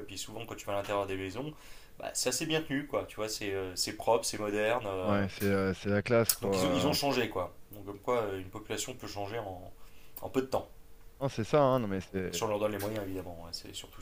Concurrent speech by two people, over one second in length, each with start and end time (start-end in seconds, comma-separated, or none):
none